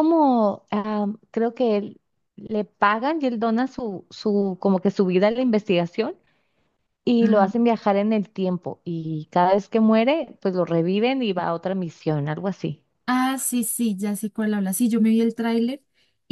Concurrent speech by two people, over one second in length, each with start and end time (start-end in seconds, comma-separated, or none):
none